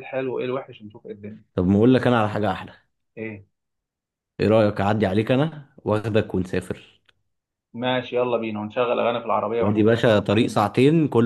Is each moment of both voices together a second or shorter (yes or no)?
yes